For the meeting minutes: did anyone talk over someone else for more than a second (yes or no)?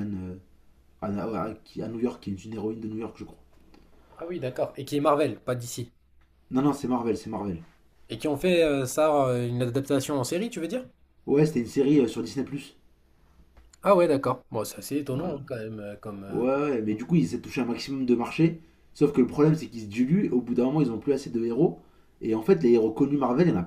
no